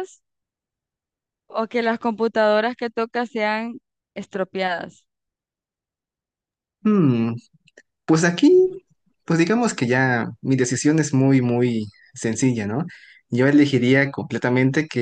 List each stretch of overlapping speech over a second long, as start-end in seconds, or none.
none